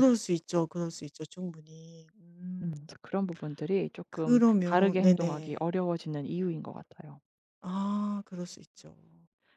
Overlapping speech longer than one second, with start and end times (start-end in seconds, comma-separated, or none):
4.1-5.7